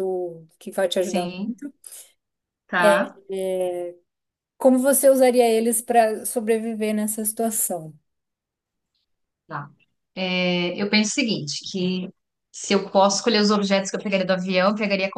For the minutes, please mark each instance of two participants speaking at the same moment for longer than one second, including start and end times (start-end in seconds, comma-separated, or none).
none